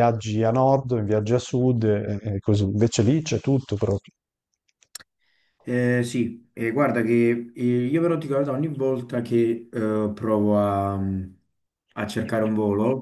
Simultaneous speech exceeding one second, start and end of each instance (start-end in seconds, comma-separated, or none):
none